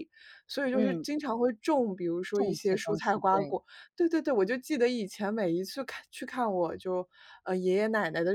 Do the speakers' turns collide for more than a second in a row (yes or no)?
yes